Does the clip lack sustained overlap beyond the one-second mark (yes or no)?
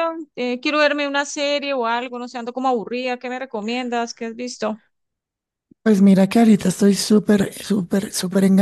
yes